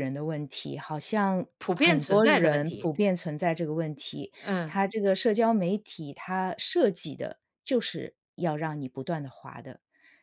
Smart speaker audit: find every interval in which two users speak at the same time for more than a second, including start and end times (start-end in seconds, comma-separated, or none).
1.6-2.9